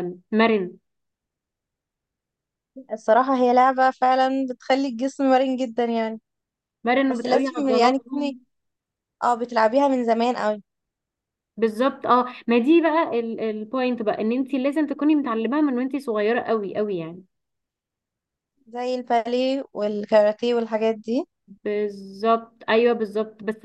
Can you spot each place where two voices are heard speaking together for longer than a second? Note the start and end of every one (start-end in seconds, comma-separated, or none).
7.1-8.4